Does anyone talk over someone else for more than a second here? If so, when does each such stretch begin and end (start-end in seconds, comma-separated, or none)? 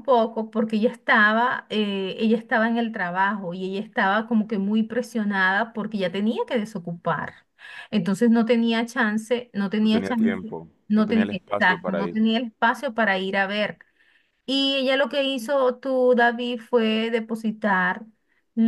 9.8-12.2